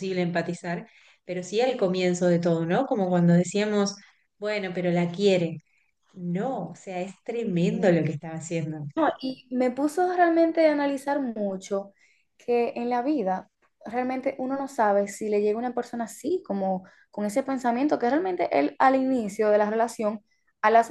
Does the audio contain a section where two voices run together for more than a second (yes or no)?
no